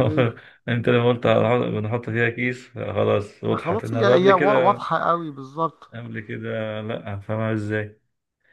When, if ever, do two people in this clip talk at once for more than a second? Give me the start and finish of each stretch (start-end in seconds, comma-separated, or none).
3.6-4.8